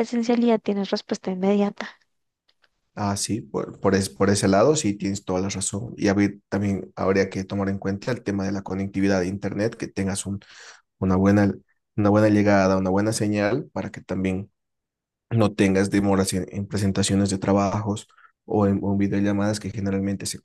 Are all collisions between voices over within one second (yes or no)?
yes